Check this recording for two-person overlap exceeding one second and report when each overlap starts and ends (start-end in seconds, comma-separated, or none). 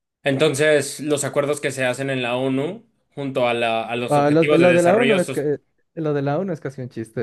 4.1-5.6